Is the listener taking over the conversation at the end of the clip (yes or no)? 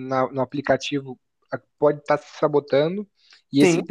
no